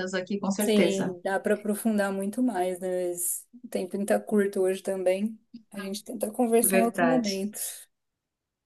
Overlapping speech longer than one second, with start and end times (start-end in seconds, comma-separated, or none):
none